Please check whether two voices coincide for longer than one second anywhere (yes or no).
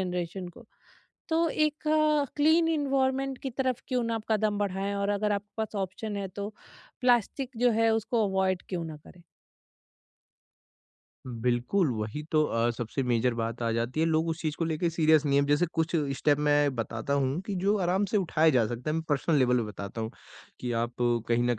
no